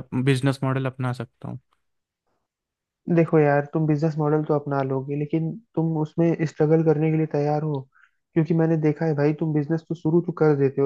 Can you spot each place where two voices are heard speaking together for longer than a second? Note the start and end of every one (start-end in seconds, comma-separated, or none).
none